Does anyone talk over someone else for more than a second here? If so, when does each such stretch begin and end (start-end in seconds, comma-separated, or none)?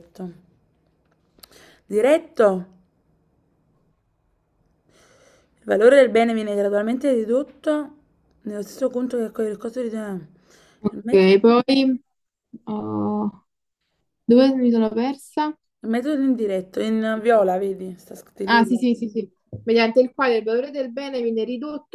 none